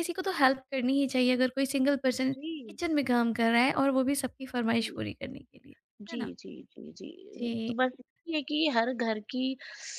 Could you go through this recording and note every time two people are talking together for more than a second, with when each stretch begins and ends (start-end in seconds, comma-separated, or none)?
none